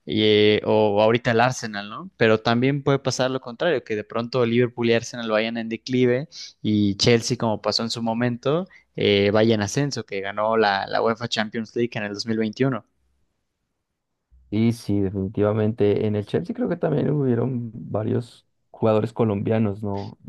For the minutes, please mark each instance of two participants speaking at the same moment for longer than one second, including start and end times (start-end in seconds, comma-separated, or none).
none